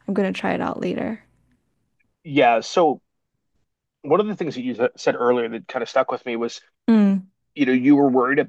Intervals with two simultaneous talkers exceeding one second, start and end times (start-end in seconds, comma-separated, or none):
none